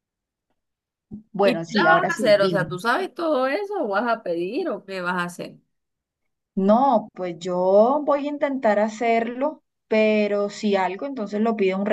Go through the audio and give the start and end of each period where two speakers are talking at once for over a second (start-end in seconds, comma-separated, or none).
1.4-2.7